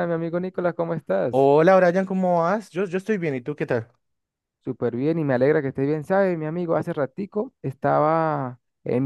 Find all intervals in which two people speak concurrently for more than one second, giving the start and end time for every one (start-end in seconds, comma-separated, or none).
none